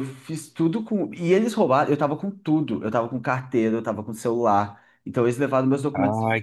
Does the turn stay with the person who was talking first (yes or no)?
no